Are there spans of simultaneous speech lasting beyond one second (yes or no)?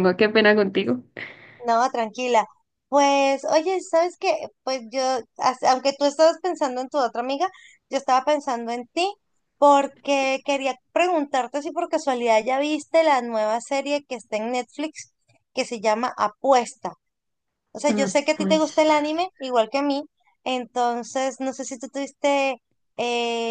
yes